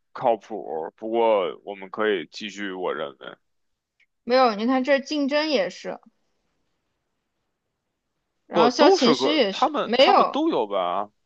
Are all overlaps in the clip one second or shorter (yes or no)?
no